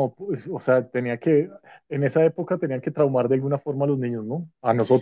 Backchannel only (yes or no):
no